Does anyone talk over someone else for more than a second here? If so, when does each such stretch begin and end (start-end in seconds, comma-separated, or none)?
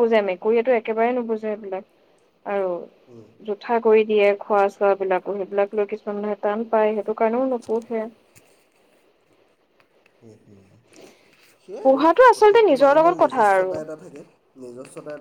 11.8-13.7